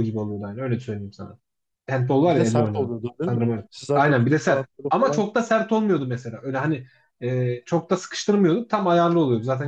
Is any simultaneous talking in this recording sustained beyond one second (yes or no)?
yes